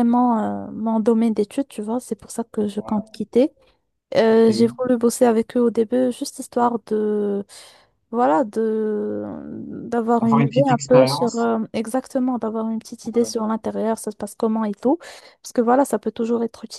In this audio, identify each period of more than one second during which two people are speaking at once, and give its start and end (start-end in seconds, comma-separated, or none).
10.2-11.5